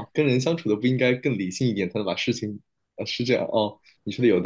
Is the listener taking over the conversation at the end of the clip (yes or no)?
yes